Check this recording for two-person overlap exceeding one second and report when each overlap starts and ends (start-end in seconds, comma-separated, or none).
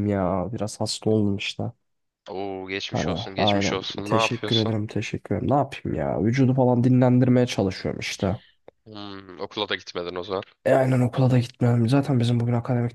2.9-4.7